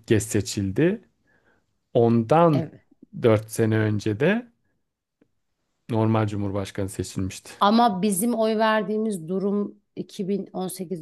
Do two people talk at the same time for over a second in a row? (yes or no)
no